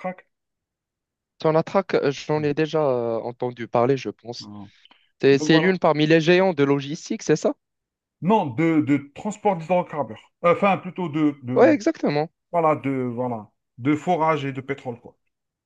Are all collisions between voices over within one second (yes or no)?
yes